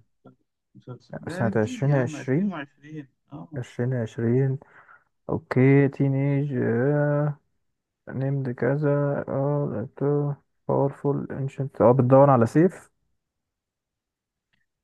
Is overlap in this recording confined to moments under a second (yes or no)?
no